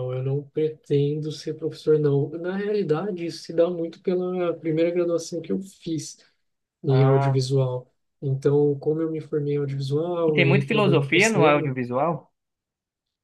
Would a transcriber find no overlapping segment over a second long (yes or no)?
no